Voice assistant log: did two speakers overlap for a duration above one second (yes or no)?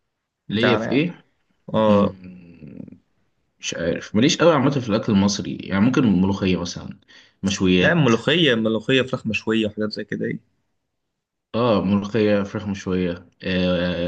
no